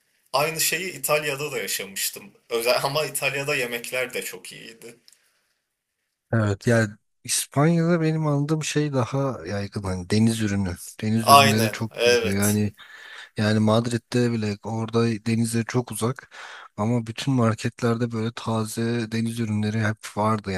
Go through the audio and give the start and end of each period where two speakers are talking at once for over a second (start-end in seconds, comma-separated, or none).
11.2-12.6